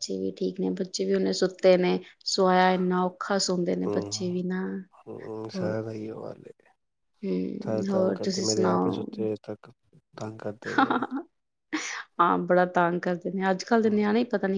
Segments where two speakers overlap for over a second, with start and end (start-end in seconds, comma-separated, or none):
none